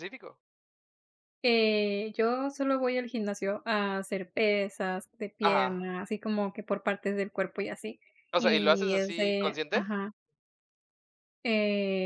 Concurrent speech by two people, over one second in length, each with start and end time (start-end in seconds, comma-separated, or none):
8.4-9.8